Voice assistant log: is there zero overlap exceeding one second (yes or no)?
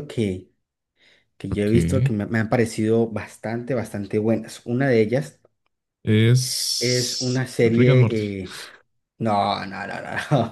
no